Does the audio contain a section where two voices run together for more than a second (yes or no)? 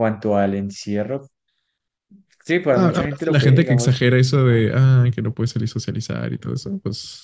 yes